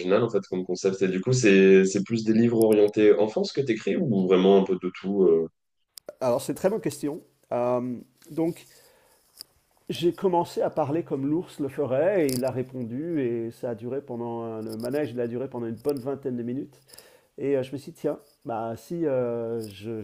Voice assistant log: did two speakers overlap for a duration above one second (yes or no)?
no